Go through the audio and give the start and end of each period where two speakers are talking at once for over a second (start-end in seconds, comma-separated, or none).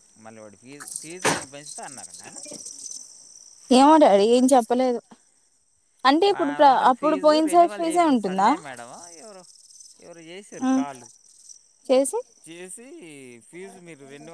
6.4-8.5